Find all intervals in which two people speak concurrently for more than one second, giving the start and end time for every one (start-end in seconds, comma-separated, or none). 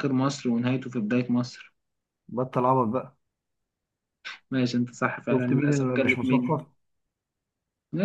5.3-6.6